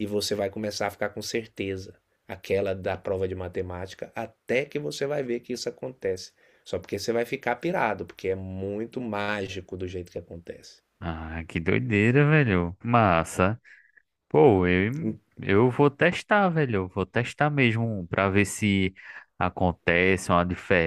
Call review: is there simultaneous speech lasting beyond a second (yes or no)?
no